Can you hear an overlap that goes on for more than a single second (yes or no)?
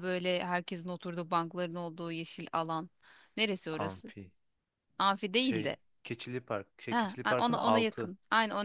yes